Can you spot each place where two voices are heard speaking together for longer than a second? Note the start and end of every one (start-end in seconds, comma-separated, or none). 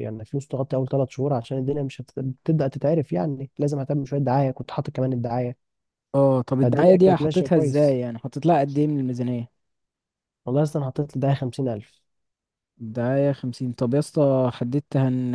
6.6-8.0